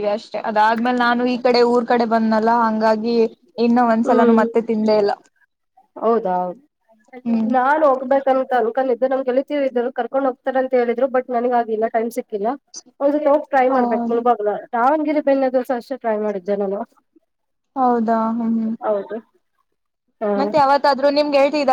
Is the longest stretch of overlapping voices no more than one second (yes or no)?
yes